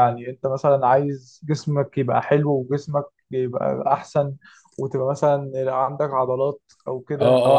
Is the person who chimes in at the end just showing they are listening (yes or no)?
no